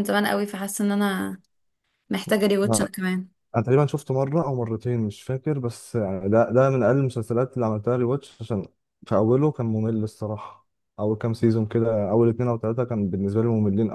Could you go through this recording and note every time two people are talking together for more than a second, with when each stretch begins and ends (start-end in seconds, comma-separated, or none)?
none